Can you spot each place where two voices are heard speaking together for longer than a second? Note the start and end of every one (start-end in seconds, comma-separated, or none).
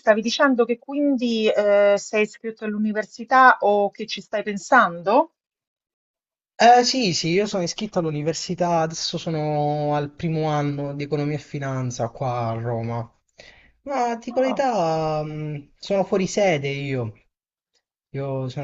none